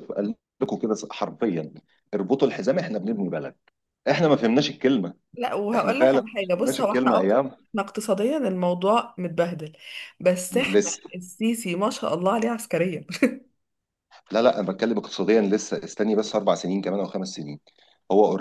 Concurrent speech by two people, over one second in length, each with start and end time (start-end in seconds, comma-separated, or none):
5.7-7.3